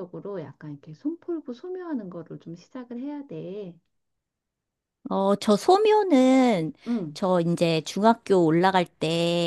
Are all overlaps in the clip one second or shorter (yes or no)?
yes